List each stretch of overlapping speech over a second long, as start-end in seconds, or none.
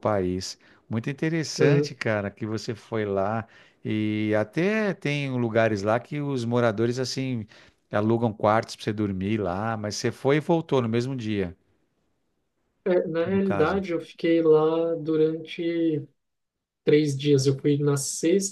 none